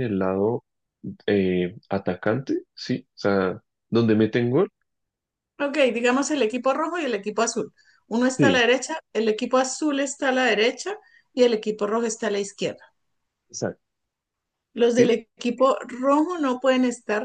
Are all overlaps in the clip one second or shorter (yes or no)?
yes